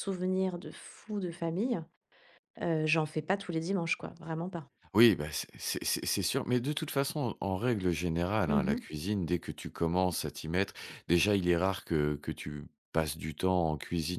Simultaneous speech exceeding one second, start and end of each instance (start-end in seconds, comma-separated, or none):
none